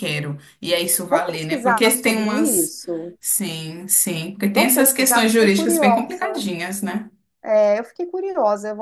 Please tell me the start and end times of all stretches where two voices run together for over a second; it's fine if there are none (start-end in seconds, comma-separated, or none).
1.1-2.7, 4.5-6.5